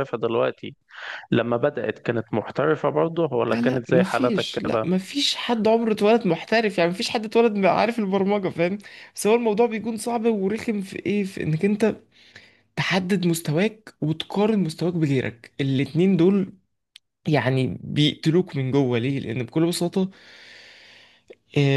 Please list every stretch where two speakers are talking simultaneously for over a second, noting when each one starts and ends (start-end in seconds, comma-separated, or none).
3.5-4.9